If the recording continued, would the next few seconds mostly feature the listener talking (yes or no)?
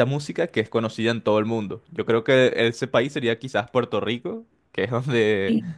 no